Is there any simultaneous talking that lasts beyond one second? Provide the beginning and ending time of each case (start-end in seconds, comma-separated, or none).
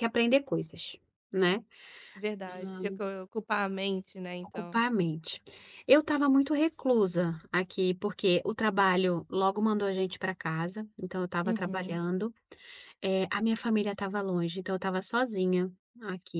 none